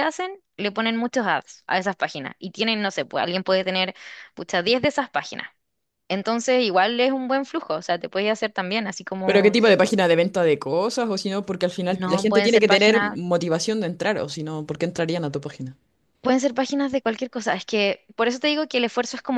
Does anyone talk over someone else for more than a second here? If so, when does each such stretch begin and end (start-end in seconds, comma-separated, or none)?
11.9-13.2